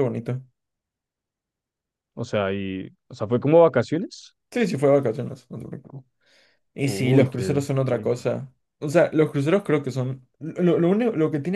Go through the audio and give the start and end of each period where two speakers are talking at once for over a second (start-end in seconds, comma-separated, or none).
6.8-8.3